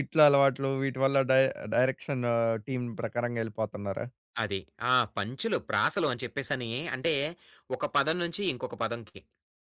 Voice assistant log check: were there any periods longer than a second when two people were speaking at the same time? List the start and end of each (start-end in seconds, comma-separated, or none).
none